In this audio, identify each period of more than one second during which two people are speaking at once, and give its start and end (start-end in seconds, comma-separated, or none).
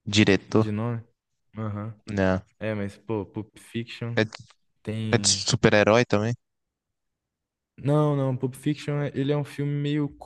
none